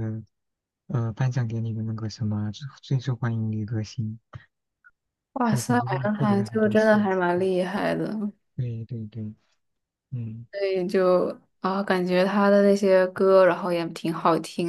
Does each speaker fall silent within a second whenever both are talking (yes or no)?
no